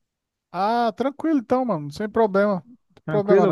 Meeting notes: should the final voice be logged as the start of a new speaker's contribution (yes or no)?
yes